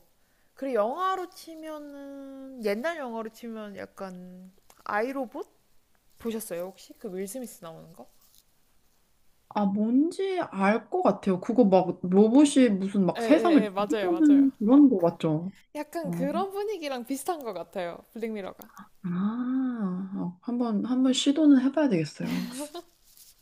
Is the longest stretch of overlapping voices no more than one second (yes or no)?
no